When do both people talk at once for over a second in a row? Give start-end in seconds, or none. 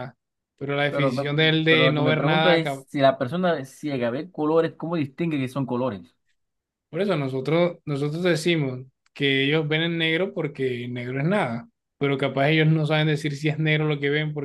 0.9-2.5